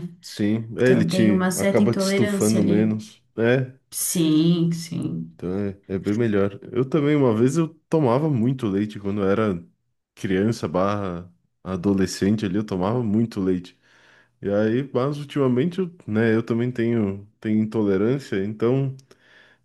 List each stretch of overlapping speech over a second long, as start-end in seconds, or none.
0.8-3.0